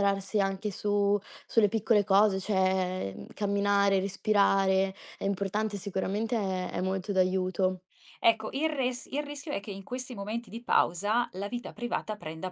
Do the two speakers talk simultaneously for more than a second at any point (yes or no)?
no